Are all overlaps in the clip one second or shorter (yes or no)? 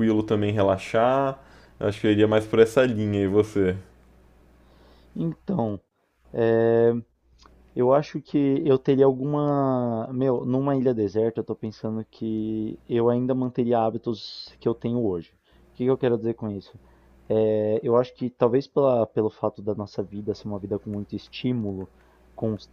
yes